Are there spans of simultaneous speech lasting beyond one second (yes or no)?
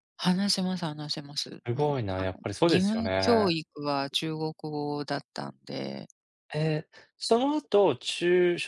yes